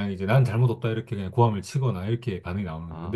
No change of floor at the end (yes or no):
yes